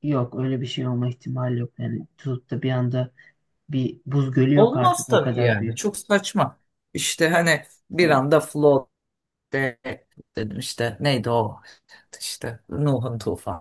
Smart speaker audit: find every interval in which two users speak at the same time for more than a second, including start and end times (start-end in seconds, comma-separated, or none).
4.5-5.8